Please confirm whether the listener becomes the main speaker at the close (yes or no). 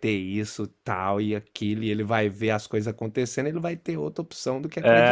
yes